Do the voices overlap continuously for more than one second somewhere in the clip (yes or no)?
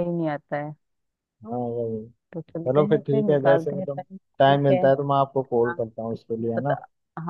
yes